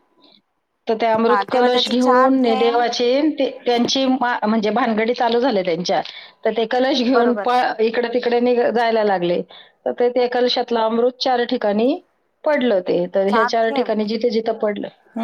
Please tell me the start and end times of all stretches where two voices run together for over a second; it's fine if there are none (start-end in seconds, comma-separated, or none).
1.3-2.8